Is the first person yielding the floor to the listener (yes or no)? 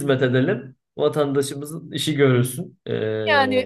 yes